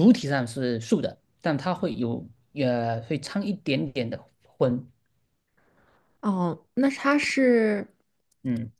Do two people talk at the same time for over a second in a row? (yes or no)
no